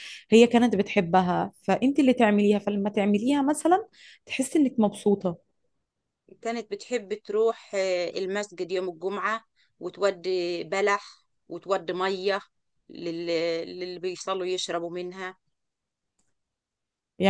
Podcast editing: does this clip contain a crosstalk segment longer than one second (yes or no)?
no